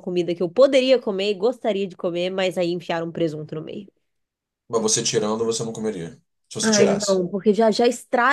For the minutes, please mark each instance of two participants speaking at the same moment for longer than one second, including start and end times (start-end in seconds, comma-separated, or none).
none